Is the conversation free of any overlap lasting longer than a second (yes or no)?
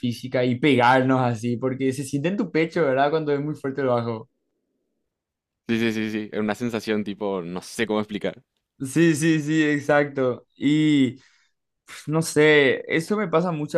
yes